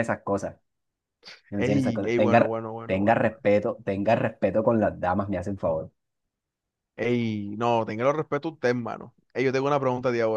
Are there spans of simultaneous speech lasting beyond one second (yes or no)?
yes